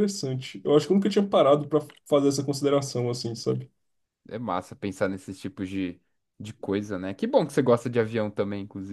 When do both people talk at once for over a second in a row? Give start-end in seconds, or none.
none